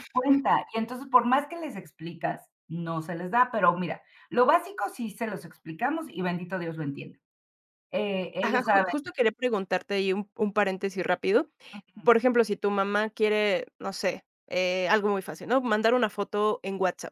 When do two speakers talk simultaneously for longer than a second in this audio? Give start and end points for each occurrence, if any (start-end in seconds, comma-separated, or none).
none